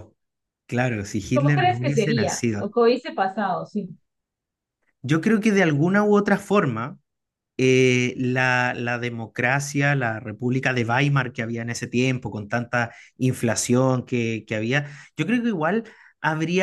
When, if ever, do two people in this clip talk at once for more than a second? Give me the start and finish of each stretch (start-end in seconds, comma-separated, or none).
1.3-2.7